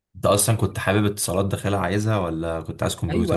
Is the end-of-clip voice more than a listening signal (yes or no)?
yes